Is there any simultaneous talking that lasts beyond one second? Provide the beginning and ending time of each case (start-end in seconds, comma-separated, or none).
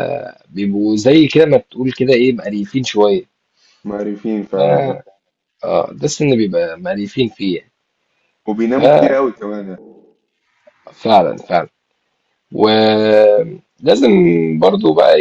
none